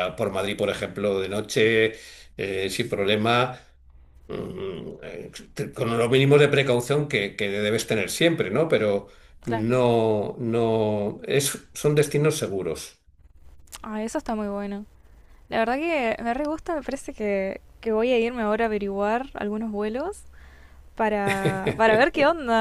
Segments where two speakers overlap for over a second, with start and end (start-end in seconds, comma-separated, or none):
none